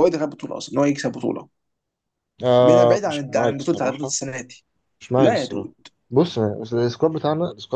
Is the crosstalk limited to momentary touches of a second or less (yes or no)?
no